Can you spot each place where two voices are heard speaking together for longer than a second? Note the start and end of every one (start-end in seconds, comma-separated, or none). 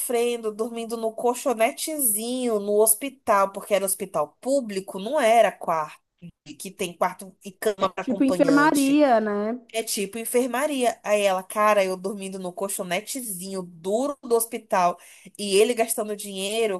7.8-9.0